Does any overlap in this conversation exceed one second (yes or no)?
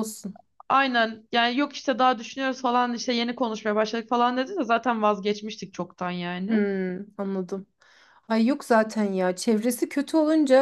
no